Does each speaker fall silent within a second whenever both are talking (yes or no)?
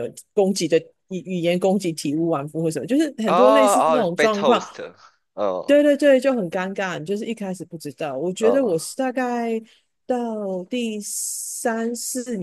no